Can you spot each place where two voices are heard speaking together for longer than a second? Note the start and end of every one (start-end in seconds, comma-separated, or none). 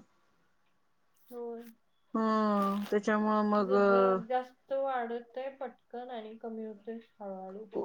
none